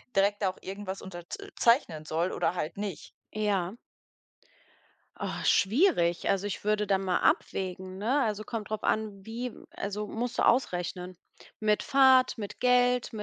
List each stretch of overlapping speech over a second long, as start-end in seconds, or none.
none